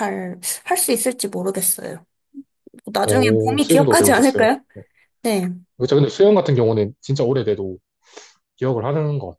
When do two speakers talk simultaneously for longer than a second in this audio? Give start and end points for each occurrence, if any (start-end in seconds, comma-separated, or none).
3.0-4.6